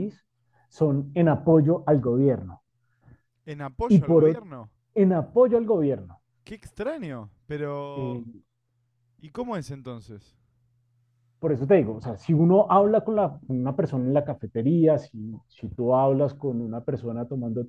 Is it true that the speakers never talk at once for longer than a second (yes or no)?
yes